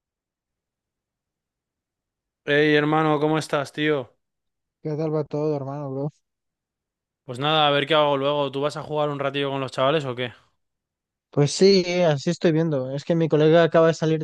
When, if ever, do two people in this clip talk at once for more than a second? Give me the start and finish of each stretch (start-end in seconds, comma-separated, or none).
none